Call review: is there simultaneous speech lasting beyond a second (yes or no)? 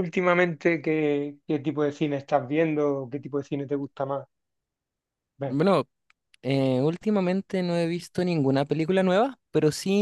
no